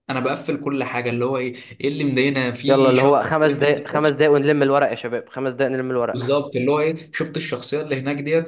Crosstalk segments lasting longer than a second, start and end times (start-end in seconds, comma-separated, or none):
none